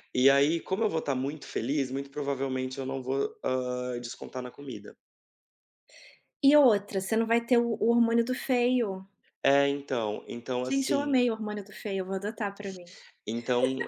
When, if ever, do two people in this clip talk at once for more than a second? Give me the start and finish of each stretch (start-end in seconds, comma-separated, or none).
none